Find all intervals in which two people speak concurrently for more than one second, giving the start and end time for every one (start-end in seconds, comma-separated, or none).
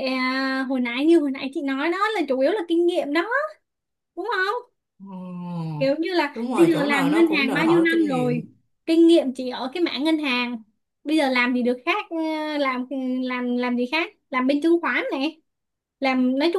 6.3-8.4